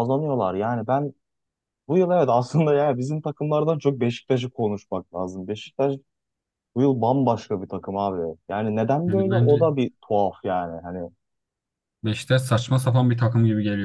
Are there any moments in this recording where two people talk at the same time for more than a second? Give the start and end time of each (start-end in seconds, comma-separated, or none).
none